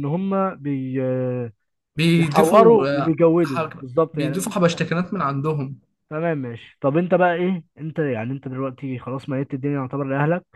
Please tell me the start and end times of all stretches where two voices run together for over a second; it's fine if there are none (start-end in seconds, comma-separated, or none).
2.1-4.9